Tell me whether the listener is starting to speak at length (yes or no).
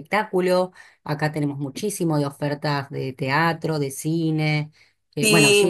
yes